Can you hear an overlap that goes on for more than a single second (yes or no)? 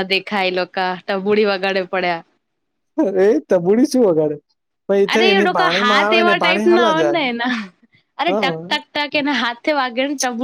yes